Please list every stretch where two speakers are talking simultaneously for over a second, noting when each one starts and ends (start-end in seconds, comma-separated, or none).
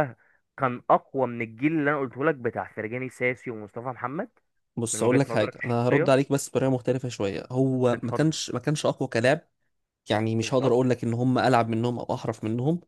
4.9-6.1